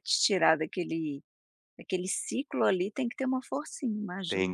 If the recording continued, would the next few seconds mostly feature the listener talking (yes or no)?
yes